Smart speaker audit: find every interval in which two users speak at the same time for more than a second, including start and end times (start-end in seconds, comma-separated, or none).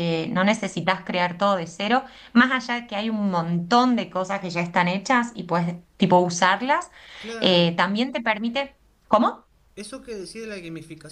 none